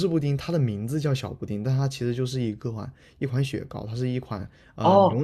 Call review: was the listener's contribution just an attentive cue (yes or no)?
no